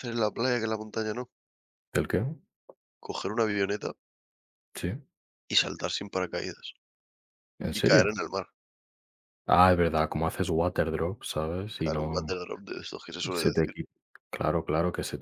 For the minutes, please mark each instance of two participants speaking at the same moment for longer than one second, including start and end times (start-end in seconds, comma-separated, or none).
none